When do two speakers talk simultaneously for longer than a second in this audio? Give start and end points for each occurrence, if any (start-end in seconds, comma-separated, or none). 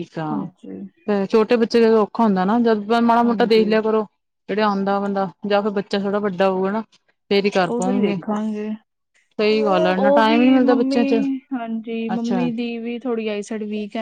9.4-11.0